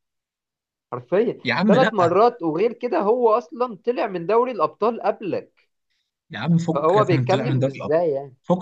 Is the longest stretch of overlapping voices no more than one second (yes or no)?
no